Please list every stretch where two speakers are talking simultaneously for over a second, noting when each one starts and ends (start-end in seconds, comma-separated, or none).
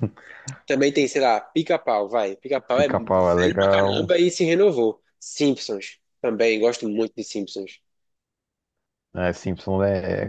2.7-4.1